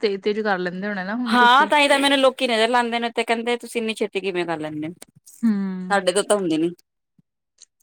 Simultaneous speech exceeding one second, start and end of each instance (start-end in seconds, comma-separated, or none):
none